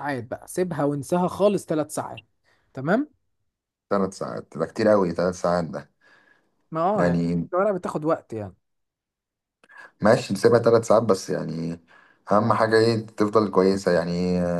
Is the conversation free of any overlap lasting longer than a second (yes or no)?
yes